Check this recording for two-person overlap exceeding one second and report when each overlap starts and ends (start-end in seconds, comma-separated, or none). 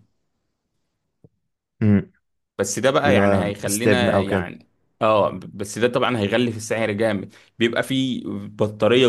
3.0-4.5